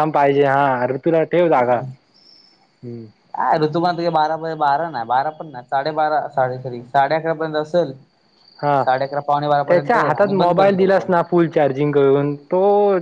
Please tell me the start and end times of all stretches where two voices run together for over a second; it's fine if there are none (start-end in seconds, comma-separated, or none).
9.7-11.1